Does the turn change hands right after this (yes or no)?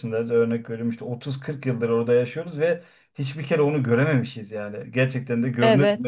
yes